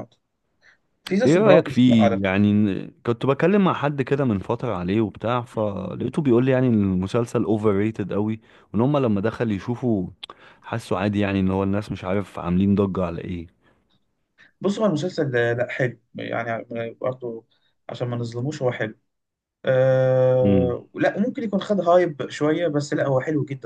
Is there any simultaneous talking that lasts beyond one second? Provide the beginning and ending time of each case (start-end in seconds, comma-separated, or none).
1.2-2.5